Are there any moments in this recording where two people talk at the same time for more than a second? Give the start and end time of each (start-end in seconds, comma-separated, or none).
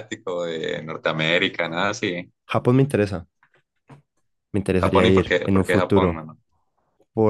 4.8-6.2